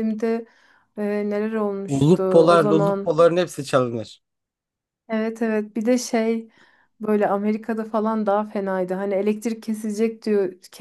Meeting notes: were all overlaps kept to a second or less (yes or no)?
no